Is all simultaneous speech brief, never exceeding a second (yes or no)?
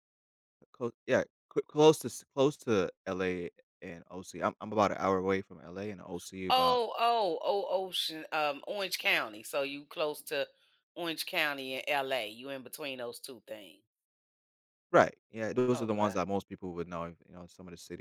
yes